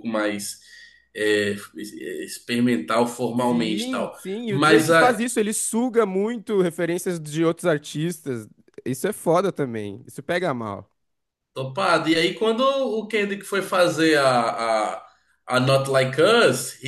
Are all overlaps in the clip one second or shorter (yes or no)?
no